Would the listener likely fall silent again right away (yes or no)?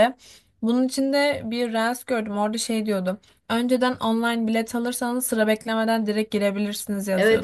no